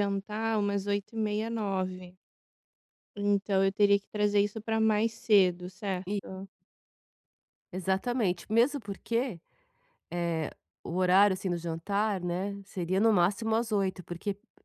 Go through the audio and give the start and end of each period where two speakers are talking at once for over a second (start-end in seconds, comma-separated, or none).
none